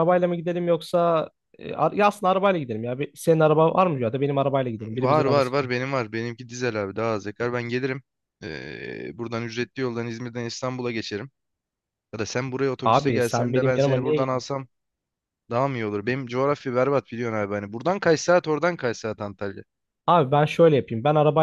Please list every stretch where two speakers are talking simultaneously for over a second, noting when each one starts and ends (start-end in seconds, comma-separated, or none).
12.8-14.3